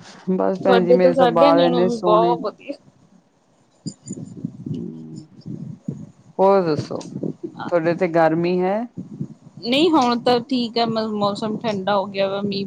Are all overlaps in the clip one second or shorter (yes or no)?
no